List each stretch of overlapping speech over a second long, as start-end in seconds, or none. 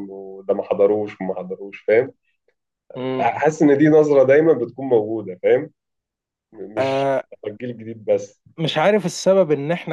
none